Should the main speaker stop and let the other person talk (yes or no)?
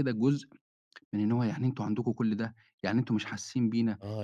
yes